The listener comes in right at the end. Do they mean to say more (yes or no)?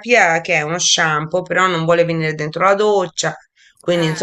no